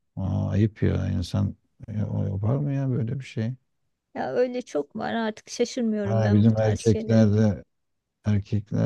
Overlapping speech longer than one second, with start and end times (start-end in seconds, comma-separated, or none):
6.0-7.3